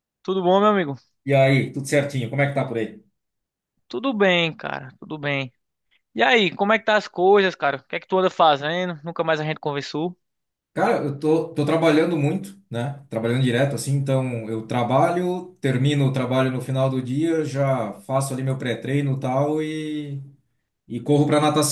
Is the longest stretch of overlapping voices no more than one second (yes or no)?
yes